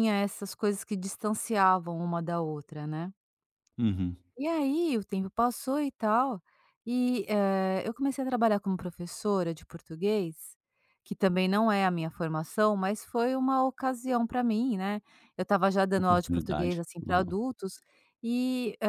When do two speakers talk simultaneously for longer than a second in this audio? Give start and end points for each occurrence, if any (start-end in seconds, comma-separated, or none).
16.0-17.4